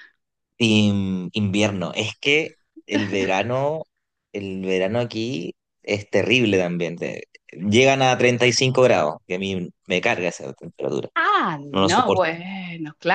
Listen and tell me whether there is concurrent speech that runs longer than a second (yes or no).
no